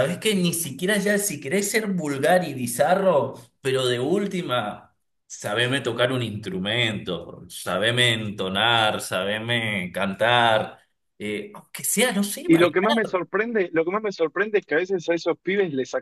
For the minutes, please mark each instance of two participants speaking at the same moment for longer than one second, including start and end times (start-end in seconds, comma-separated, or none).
none